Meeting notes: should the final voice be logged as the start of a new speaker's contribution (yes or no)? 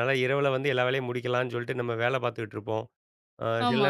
no